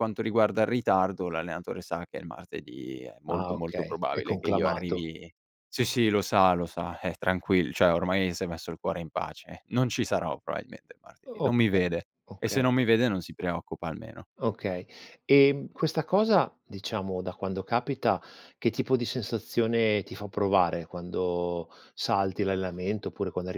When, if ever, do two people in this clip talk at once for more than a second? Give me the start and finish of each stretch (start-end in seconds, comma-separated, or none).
3.3-5.1